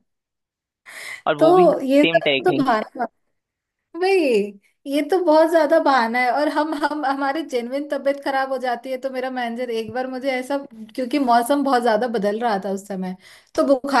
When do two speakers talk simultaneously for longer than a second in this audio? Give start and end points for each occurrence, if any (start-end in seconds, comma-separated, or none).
1.4-2.8